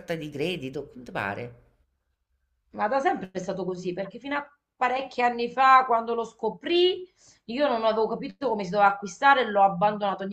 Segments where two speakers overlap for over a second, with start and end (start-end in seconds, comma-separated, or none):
none